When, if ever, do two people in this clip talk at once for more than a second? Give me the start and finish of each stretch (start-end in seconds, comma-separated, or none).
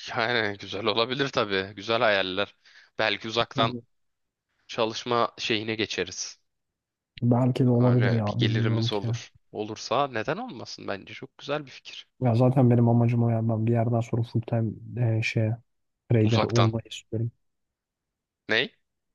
7.8-9.1